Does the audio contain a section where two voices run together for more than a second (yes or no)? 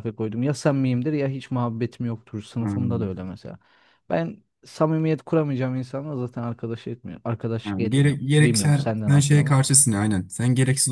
yes